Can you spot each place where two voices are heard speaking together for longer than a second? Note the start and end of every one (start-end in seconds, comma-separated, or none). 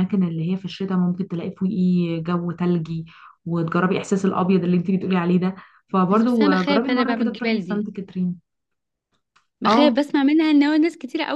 6.1-7.9